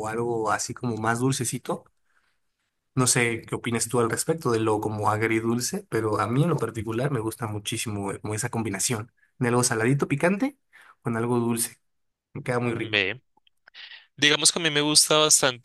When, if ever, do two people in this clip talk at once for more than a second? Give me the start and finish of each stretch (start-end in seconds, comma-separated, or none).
none